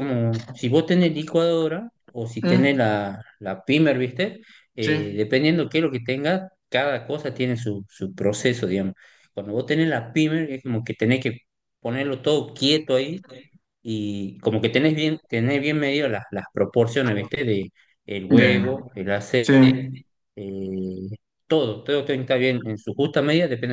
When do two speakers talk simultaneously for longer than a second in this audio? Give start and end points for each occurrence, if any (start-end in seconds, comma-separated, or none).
none